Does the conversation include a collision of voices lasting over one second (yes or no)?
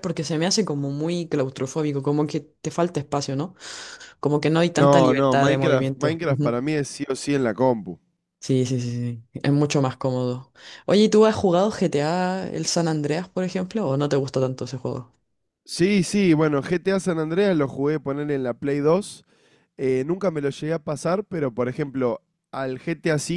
yes